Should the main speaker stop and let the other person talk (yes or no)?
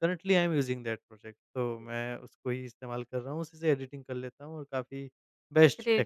yes